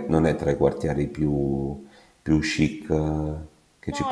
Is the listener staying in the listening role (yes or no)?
no